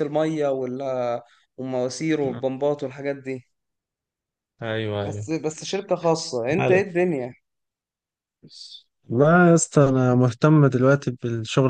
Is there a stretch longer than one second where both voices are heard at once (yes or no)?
no